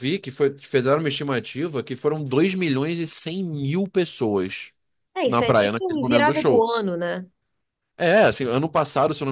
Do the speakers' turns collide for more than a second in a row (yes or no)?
yes